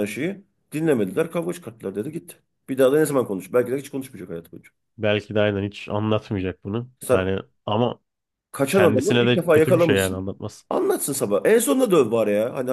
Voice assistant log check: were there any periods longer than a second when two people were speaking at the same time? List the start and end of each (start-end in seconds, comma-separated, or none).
8.7-10.3